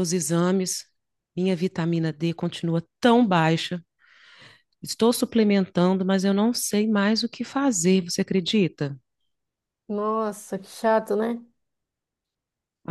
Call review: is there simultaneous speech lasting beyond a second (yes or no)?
no